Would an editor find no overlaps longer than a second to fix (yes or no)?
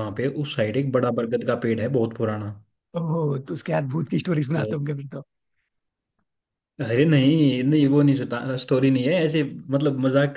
yes